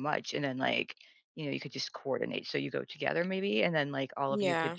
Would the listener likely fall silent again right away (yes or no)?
yes